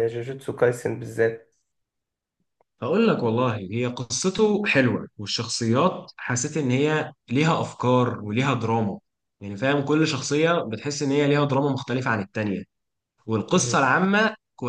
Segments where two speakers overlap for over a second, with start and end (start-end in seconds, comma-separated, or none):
none